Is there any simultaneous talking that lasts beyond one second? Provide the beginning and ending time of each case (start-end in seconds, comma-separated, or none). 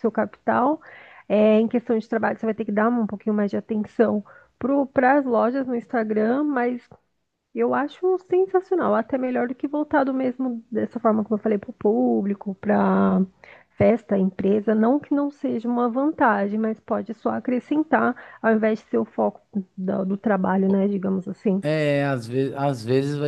none